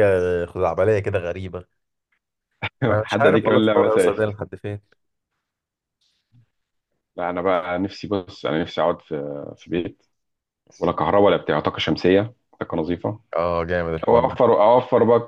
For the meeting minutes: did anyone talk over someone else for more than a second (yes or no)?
yes